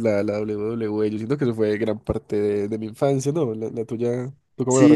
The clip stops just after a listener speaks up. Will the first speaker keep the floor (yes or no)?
no